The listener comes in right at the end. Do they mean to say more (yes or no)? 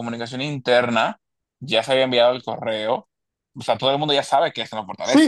yes